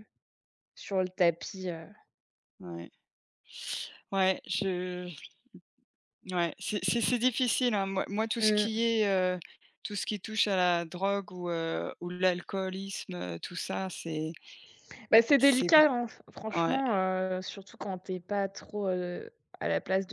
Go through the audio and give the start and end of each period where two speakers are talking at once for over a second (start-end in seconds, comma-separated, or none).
none